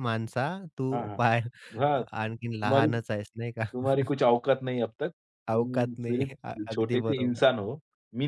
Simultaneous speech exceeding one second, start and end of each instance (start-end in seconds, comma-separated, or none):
5.5-7.5